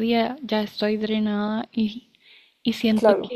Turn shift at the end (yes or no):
no